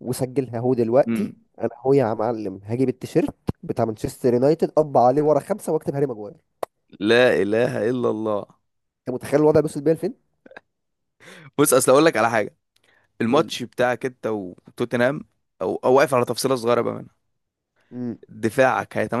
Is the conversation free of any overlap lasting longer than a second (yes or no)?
yes